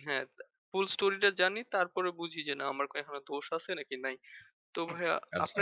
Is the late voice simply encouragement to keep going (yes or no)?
yes